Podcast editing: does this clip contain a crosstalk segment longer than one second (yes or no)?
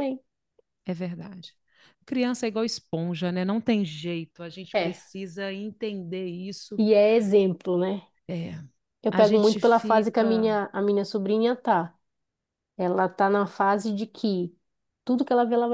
yes